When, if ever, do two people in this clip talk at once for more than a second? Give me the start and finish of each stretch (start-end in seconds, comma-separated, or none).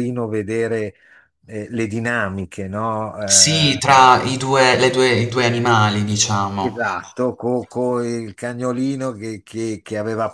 none